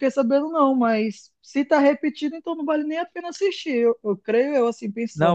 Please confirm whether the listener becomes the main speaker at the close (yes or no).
yes